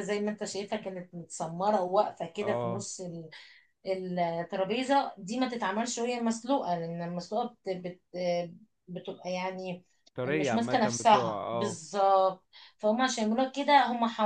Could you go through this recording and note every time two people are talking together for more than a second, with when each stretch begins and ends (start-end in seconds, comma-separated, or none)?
10.2-11.8